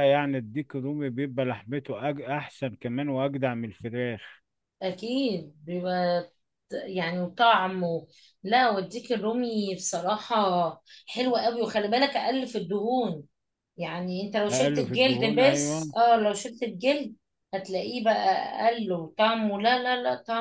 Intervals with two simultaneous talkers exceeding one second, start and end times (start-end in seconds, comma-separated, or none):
14.5-15.9